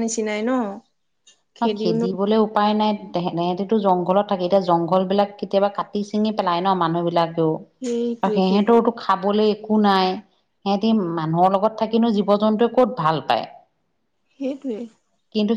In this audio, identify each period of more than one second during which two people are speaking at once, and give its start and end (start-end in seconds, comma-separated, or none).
none